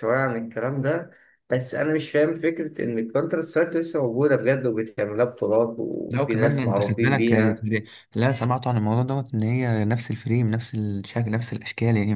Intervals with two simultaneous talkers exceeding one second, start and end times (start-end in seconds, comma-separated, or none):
6.1-7.7